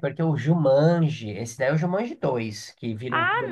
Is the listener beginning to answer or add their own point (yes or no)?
yes